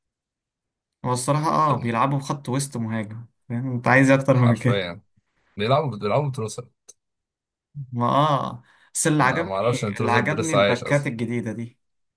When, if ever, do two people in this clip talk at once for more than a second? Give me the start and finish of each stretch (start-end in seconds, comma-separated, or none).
9.2-11.1